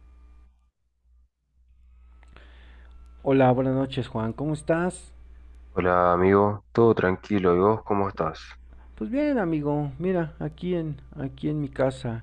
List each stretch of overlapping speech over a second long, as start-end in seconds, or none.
none